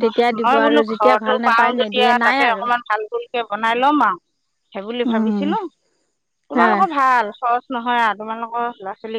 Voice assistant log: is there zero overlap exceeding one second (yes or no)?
no